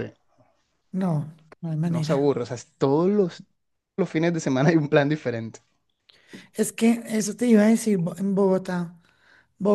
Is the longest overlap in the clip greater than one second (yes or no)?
no